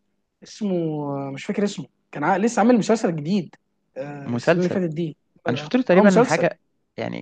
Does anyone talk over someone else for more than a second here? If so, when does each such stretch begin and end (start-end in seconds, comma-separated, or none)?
none